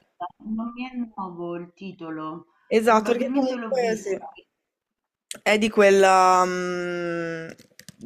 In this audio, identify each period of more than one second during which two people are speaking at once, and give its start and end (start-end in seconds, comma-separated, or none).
2.8-4.2